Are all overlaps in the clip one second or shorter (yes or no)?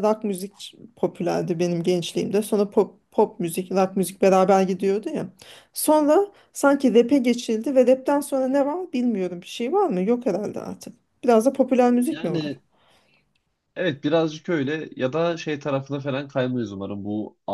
yes